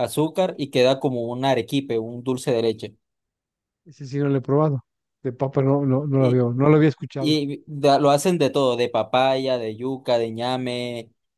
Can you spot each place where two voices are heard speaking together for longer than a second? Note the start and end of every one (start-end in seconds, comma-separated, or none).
none